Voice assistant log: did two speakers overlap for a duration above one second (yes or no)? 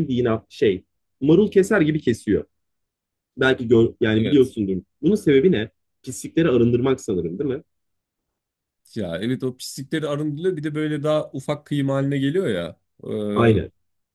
no